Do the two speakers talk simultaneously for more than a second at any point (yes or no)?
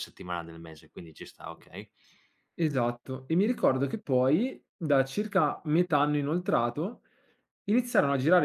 no